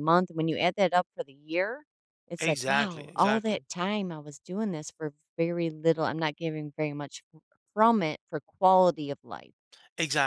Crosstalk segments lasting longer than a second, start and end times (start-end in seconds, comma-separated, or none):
2.4-3.7